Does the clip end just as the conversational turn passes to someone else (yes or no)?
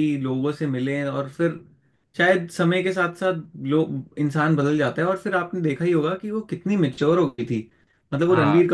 no